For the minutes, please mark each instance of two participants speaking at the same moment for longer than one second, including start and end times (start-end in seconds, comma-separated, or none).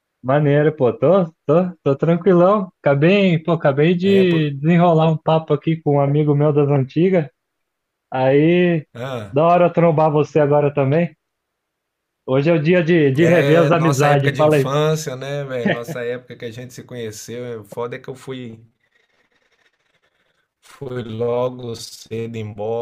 13.2-14.7